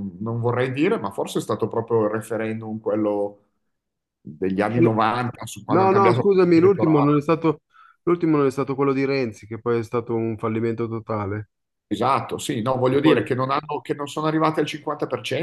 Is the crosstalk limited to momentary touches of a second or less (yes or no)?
no